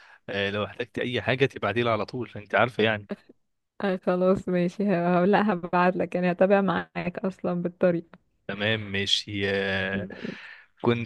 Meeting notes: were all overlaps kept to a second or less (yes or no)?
yes